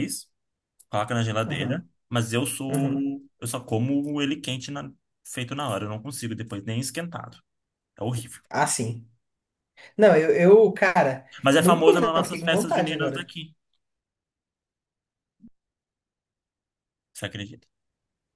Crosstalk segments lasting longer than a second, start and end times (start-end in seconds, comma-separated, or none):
11.4-13.3